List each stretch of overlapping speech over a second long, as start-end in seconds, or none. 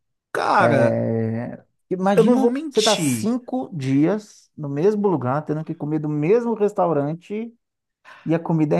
2.1-3.4